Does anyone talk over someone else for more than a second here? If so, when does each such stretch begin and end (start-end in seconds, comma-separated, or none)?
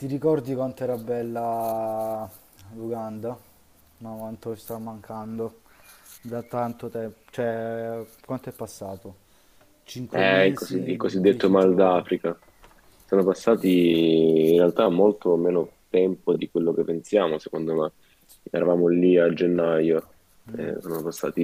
10.1-12.0